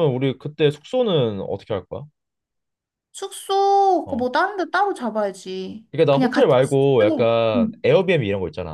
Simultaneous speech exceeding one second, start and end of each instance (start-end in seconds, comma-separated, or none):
5.9-7.8